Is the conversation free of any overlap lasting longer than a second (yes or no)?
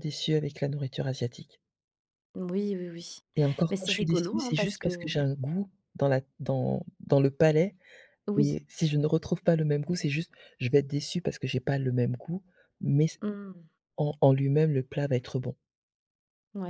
no